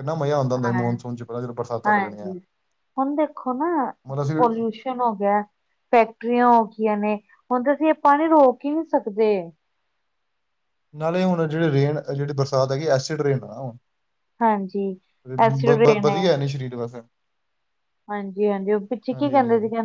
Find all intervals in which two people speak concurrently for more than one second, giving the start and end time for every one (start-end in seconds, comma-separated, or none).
none